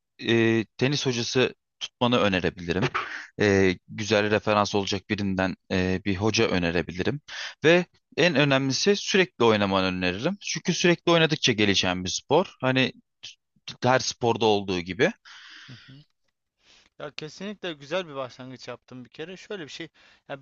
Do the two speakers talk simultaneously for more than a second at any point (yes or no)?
no